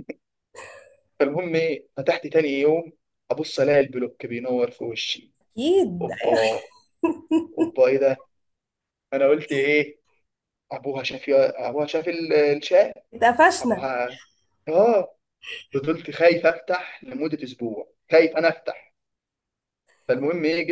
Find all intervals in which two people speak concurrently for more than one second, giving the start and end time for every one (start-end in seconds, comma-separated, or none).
none